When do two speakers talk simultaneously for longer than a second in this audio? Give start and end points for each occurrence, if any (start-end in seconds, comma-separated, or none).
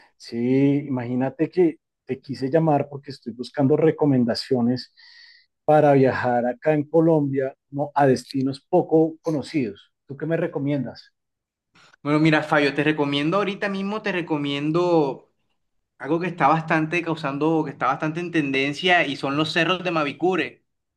none